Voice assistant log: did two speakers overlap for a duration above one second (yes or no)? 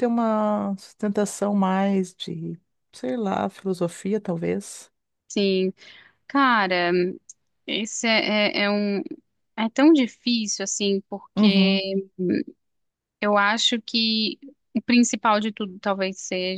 no